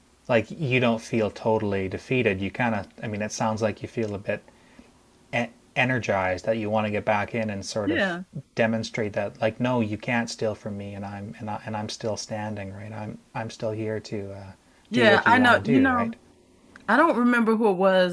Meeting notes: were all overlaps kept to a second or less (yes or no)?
no